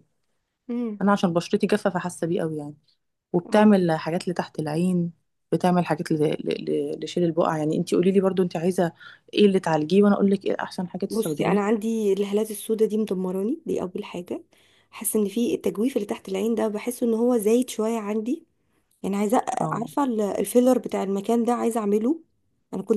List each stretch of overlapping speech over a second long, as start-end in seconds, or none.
none